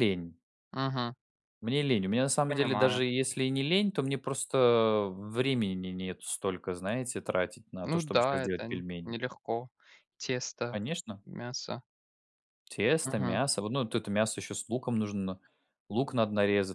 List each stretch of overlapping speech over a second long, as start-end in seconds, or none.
7.8-9.2